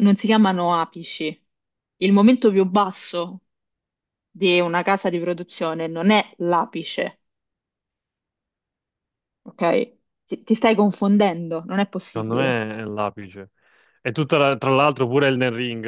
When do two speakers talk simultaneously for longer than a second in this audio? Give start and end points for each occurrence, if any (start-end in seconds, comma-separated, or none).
none